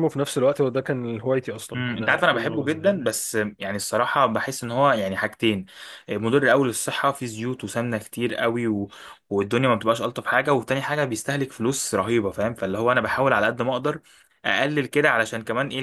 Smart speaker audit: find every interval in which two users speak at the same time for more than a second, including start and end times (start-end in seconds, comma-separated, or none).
1.8-3.0